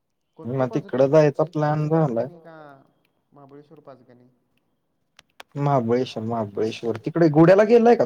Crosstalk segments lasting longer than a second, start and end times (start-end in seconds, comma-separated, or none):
0.6-2.2